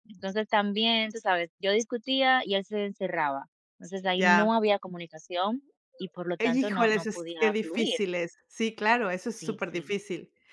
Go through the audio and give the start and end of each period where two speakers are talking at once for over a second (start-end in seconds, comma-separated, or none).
6.4-8.0